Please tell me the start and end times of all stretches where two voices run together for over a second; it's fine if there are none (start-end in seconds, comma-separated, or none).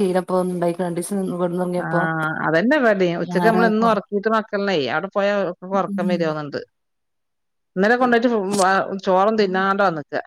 none